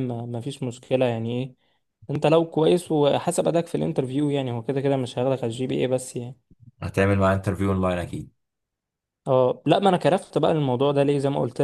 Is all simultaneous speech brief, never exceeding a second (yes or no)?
yes